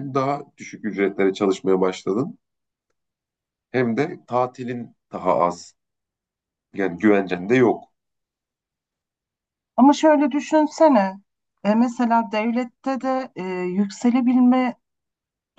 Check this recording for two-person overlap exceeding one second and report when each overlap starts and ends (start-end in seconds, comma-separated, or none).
none